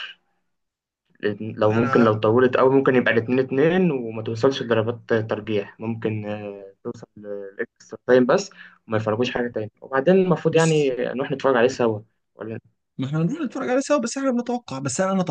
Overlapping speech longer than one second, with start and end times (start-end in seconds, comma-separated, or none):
none